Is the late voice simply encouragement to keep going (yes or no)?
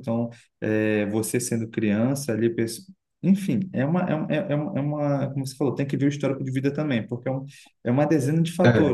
yes